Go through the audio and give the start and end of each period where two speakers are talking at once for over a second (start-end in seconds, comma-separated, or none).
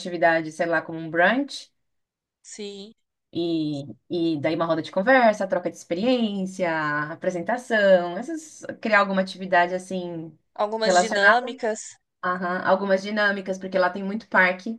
none